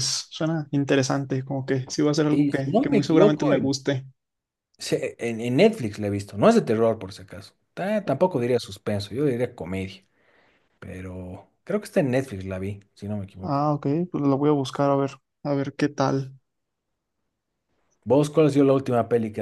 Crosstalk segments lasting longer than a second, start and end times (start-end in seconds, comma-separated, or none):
2.3-3.7